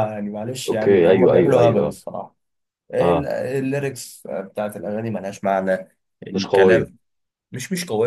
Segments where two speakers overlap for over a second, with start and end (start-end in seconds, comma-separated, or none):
0.7-1.9